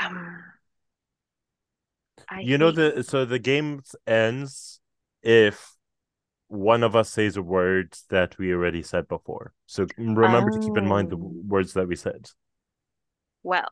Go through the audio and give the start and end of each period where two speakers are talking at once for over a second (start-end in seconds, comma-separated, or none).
10.2-11.4